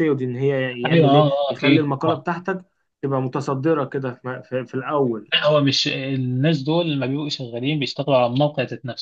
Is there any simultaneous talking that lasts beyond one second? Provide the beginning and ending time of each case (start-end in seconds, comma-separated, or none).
0.8-2.2